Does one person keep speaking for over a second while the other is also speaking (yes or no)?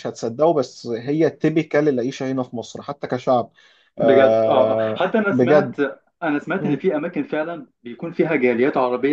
yes